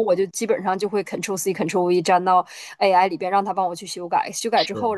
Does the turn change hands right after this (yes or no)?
no